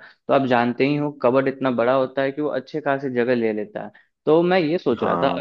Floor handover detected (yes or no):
no